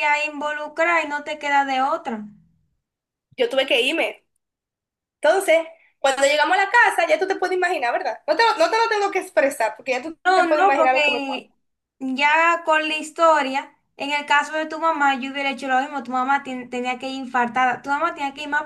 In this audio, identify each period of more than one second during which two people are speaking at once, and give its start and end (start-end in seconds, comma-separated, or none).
10.2-11.5